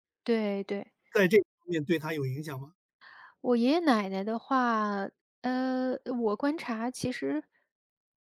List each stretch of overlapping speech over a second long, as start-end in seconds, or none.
none